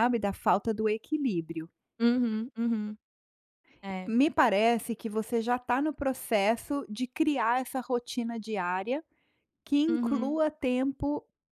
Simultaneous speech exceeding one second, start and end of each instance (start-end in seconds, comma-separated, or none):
none